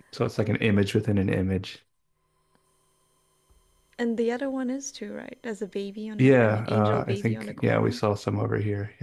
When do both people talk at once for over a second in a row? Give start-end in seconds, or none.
6.2-8.0